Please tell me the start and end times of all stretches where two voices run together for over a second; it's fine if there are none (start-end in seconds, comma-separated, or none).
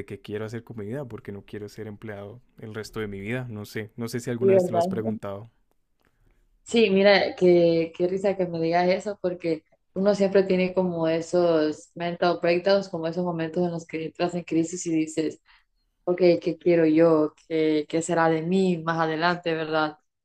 none